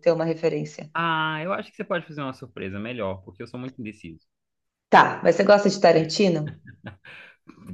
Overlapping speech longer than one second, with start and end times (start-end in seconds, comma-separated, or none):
none